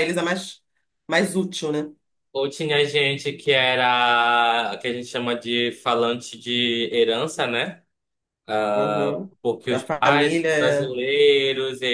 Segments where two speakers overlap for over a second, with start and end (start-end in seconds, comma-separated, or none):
9.7-11.0